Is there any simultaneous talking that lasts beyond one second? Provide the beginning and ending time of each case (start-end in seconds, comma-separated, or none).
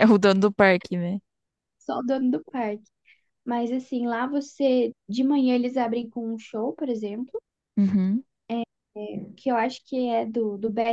none